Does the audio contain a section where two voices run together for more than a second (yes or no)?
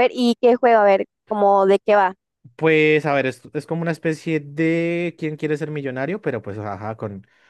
no